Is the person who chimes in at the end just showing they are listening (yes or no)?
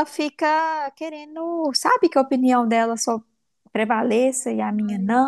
yes